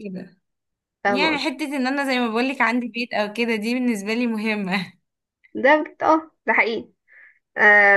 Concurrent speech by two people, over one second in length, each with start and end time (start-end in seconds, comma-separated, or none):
none